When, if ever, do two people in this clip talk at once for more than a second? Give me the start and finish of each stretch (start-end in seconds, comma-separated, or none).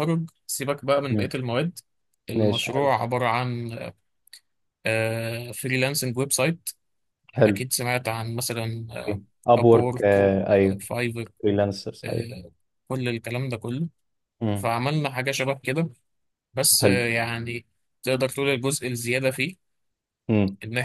none